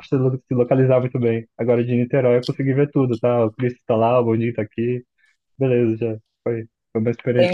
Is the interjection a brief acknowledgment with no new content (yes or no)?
no